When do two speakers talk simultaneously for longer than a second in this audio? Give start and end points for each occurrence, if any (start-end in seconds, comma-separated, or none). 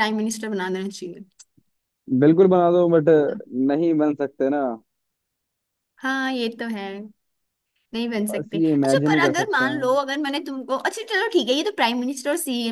8.3-10.0